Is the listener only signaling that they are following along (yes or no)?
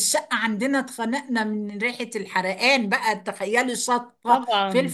yes